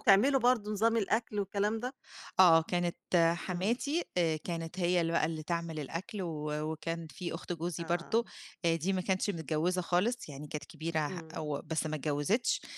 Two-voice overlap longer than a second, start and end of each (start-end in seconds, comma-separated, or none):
none